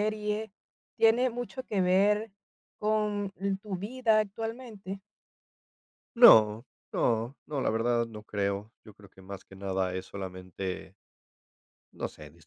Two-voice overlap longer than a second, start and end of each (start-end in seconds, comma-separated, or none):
none